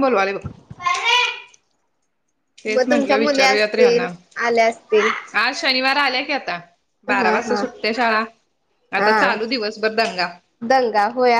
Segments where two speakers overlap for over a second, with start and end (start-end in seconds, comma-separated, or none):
2.7-4.1